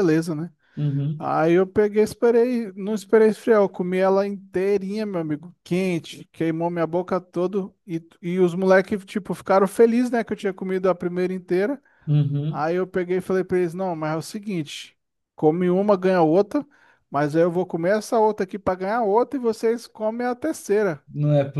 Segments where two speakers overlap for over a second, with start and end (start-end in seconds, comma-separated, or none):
none